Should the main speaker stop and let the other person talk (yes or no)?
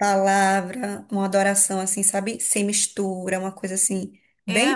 yes